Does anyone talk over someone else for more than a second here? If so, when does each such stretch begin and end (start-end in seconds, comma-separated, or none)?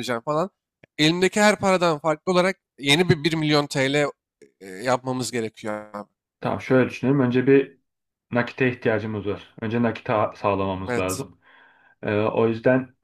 none